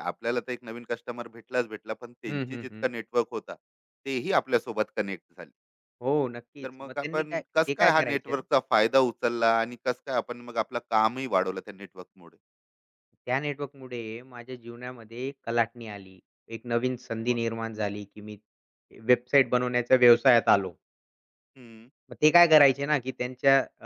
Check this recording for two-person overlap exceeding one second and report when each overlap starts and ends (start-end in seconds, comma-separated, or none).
6.6-8.4